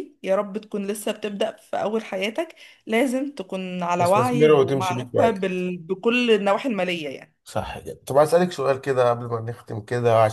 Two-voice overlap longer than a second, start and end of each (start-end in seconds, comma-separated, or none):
4.0-5.7